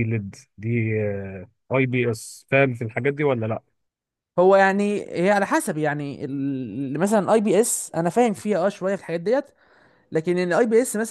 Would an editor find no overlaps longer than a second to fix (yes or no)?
yes